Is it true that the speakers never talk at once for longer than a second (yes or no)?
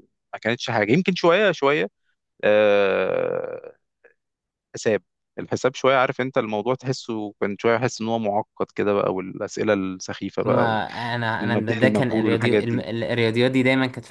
no